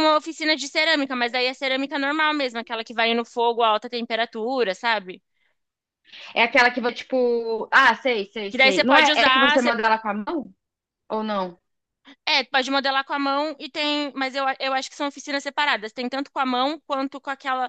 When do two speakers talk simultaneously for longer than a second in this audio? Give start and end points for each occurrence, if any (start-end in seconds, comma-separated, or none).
8.5-9.7